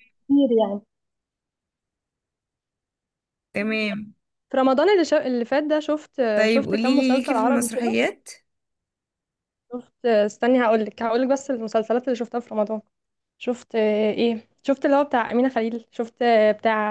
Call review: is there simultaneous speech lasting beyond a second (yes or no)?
yes